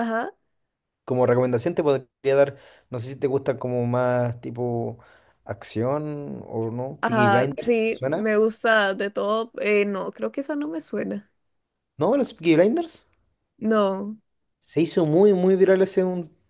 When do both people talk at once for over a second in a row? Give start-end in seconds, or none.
7.0-8.3